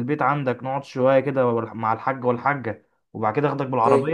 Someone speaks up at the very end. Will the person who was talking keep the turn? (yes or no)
yes